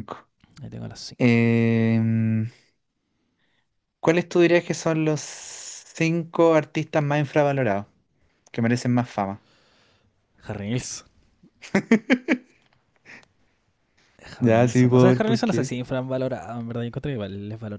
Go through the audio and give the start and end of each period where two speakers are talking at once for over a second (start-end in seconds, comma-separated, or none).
14.4-15.7